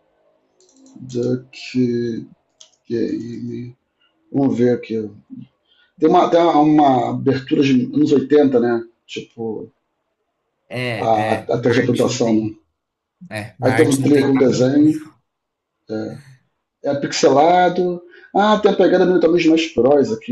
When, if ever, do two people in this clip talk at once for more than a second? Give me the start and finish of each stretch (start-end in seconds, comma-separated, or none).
11.0-12.5, 13.6-15.0